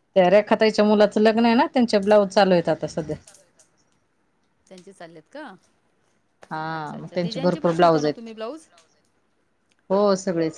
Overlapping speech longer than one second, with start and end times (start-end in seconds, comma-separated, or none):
6.7-8.3